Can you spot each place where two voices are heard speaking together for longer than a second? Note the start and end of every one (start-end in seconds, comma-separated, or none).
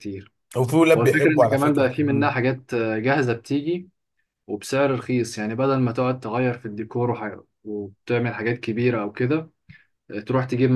1.0-2.4